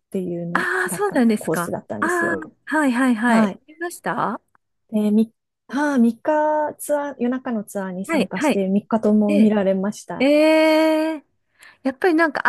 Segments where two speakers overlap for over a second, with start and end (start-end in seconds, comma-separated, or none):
0.5-2.5